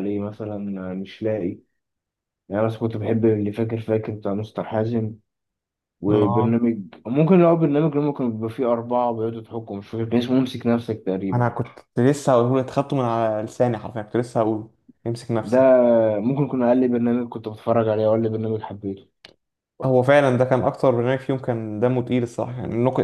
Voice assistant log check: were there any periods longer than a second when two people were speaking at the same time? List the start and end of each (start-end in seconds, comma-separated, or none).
none